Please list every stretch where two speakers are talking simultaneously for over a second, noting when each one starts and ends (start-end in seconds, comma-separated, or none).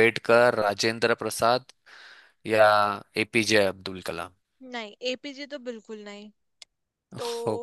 none